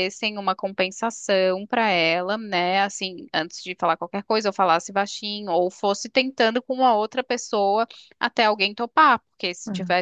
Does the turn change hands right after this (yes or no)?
no